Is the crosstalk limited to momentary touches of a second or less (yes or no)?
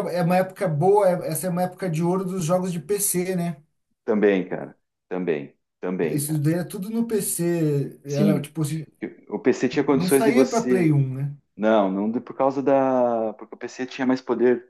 no